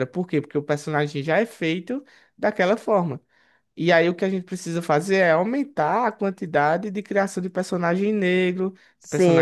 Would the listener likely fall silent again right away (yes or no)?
no